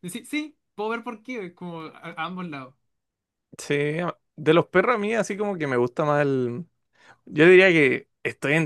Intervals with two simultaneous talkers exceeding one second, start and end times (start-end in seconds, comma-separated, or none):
none